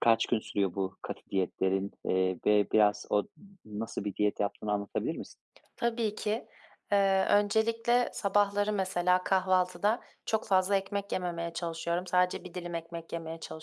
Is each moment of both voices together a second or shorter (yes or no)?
yes